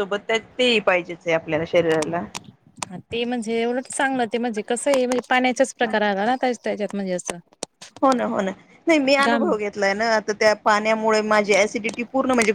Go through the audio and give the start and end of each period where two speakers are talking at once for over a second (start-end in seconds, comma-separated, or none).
none